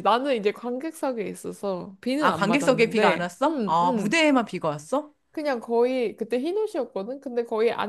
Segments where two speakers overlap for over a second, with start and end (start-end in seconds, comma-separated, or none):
2.2-4.2